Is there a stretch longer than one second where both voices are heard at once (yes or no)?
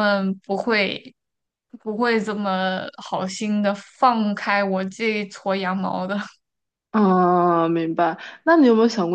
no